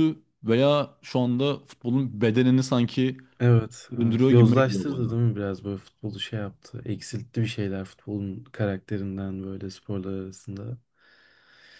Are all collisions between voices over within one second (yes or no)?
no